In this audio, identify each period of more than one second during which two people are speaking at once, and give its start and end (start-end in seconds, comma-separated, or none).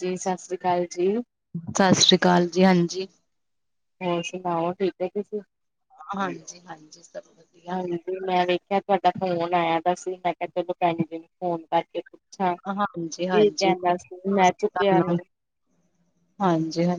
12.8-14.4